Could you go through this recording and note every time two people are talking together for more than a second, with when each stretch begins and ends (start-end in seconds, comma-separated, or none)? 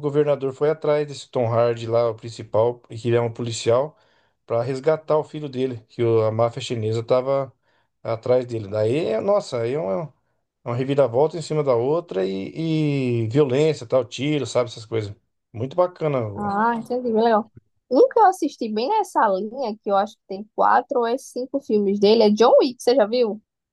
none